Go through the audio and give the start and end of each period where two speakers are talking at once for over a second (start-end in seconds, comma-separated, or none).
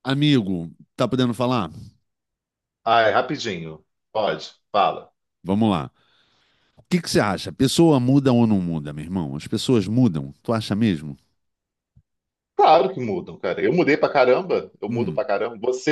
none